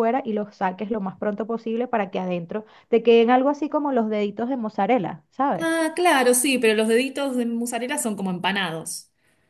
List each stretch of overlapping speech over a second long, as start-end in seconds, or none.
none